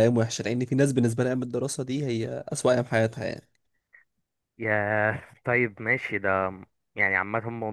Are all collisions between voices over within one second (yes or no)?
yes